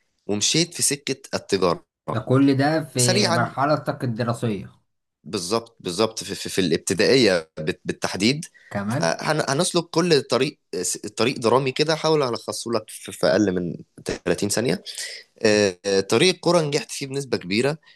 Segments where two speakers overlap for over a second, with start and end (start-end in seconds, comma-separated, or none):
none